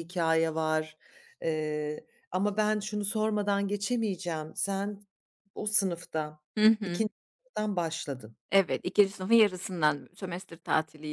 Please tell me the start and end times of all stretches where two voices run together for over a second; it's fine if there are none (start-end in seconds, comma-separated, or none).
none